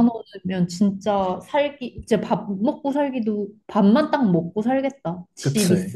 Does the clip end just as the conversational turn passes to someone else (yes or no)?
yes